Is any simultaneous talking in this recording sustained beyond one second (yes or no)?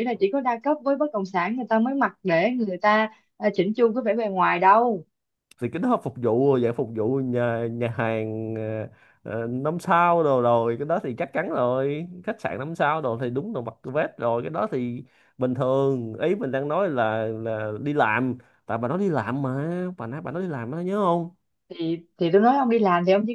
no